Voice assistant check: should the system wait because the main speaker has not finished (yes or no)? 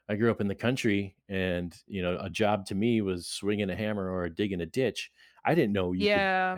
yes